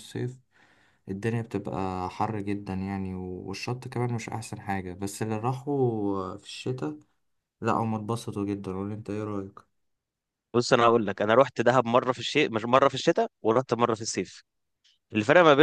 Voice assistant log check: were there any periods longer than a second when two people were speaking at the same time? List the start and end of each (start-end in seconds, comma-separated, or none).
none